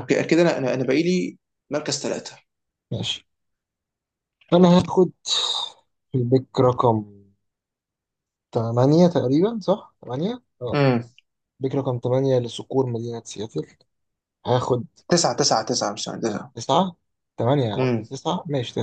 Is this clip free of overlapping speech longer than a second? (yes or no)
yes